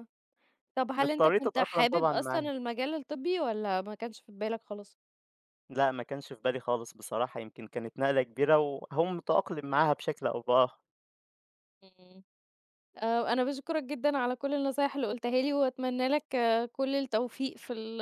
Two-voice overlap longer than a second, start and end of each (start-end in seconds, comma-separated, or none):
1.0-2.5